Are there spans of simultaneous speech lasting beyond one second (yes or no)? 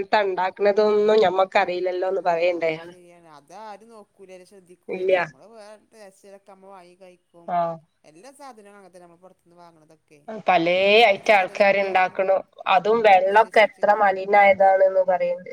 no